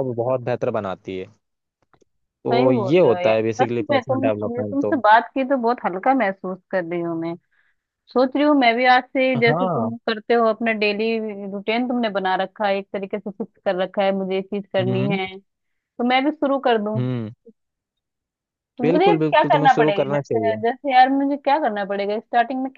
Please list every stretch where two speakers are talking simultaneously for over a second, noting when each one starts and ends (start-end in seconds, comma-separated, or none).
2.5-4.9, 18.8-20.6